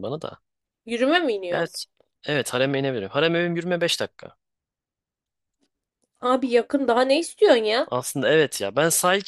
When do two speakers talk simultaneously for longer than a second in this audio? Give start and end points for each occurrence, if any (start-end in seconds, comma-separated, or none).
none